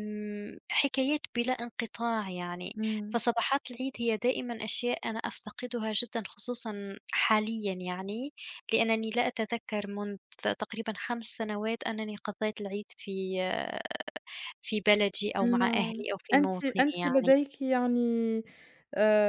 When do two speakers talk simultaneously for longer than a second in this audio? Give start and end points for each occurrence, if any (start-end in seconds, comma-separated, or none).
15.6-17.3